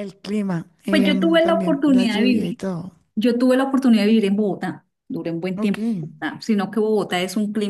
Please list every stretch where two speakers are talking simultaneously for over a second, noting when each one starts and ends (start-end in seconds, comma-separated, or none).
0.9-2.6